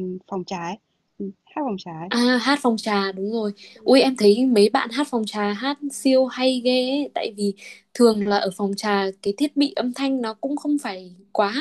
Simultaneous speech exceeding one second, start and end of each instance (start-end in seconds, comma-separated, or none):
none